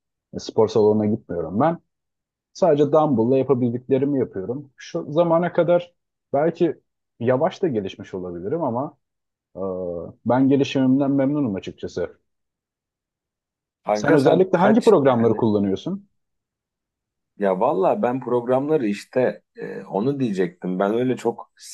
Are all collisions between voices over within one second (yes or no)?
no